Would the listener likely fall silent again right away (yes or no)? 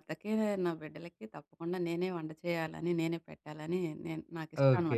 no